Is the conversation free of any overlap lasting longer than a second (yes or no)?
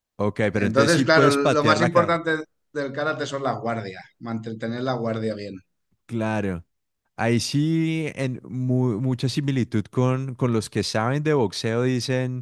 no